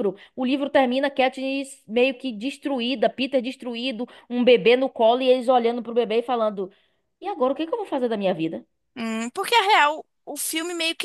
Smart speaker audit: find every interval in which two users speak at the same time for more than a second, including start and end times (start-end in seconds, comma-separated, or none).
none